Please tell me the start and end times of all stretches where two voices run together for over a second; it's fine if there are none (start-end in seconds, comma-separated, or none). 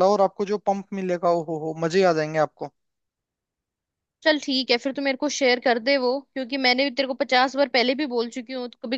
none